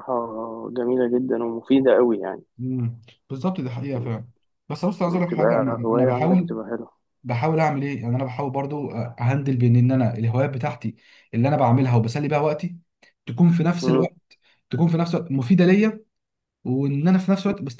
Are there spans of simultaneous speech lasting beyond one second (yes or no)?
yes